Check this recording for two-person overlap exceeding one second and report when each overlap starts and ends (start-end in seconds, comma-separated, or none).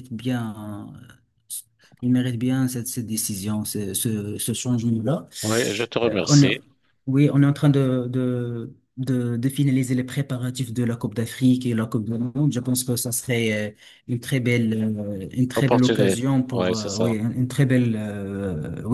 15.6-17.1